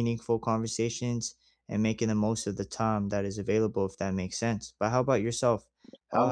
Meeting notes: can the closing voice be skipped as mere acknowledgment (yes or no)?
yes